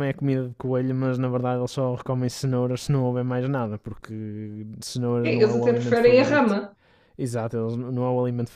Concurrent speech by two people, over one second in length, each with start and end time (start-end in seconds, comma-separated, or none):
5.2-6.5